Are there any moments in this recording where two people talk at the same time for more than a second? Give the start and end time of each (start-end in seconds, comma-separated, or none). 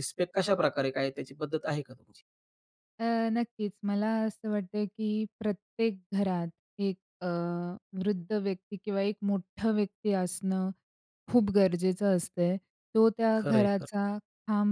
none